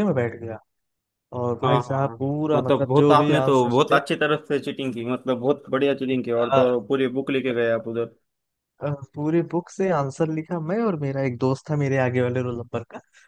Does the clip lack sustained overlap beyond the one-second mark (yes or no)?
no